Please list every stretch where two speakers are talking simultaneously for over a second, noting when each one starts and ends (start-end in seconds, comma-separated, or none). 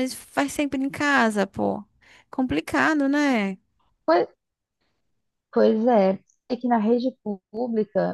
none